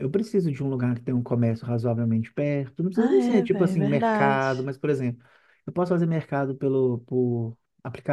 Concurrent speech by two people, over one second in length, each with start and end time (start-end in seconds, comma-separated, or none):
2.9-4.7